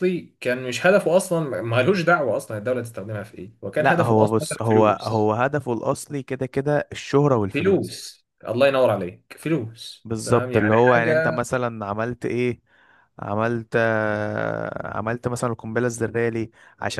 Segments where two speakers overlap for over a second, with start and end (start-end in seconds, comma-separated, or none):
3.8-5.3, 10.1-11.5